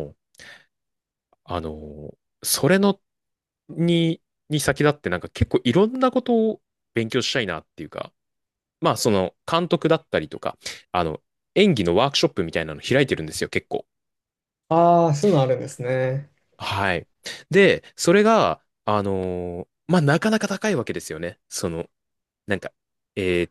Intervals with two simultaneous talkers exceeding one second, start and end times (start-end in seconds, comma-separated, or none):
none